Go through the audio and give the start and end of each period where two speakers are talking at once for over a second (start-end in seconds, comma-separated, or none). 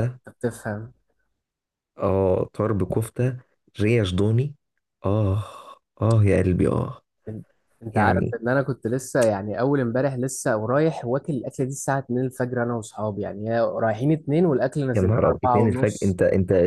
14.9-16.2